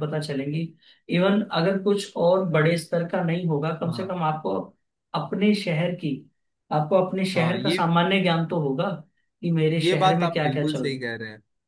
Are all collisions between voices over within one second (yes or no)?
no